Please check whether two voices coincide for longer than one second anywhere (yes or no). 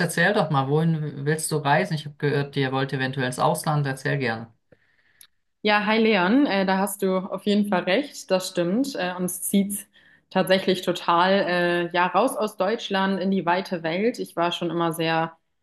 no